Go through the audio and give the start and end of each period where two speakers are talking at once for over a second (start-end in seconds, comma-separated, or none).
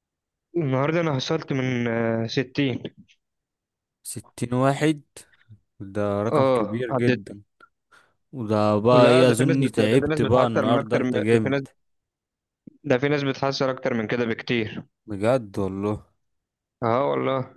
8.9-11.6